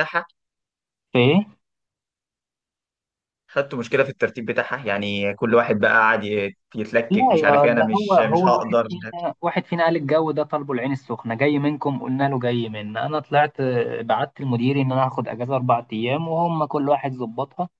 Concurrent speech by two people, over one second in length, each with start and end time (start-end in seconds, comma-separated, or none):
7.1-8.9